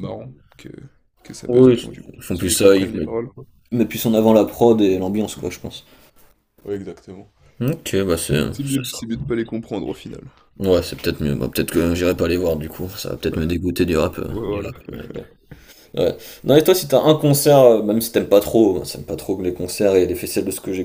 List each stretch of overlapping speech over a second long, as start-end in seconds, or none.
1.5-3.1